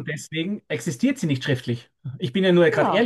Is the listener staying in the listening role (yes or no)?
no